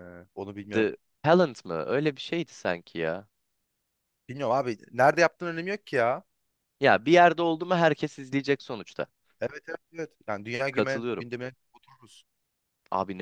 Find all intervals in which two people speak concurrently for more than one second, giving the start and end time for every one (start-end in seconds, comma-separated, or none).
none